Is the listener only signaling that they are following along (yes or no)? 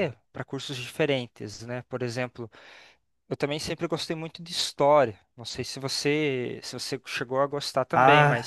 no